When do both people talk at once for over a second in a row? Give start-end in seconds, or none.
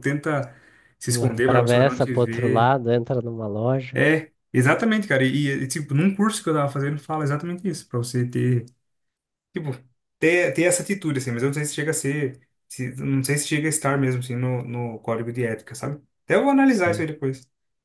1.1-2.7